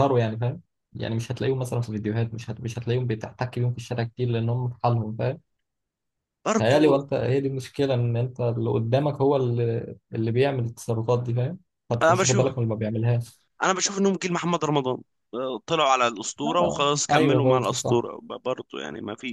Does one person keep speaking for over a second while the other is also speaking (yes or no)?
yes